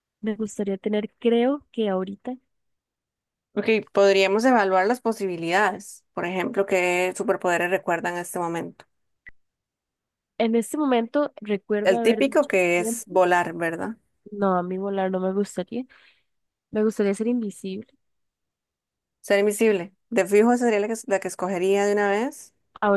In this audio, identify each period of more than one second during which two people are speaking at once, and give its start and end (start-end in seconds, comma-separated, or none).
11.8-13.2